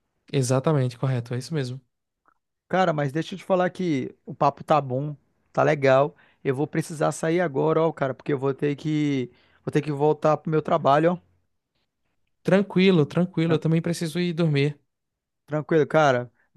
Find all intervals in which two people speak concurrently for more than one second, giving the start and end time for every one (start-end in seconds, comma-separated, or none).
none